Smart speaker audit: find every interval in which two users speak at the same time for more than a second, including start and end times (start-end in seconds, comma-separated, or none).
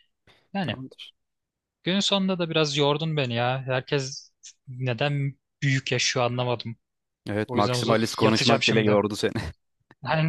7.5-9.0